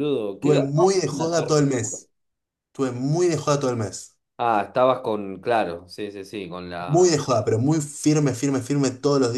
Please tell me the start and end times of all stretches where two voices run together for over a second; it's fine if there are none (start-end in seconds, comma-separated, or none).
0.6-2.0